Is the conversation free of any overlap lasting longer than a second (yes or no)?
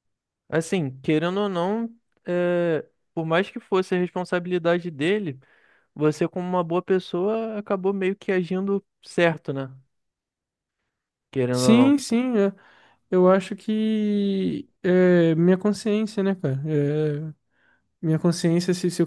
yes